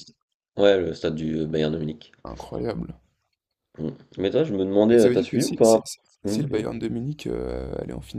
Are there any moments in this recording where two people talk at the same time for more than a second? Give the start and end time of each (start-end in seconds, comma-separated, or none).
4.9-6.7